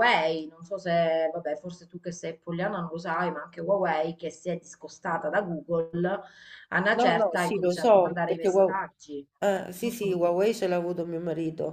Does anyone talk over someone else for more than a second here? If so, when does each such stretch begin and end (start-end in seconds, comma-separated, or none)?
6.9-8.9